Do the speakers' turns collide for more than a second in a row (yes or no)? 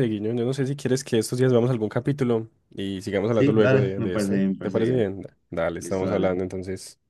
yes